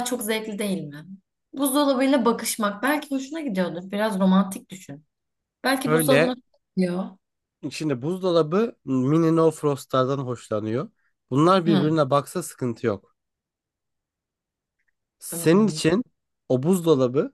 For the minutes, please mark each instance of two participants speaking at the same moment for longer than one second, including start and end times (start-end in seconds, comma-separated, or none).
none